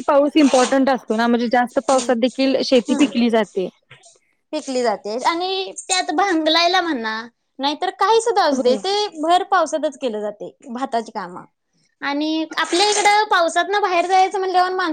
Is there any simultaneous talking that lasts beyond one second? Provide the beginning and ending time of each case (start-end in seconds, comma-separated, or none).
none